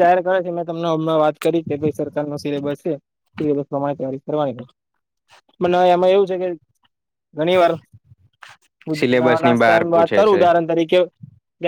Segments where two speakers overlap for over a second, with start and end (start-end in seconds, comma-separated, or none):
9.0-10.5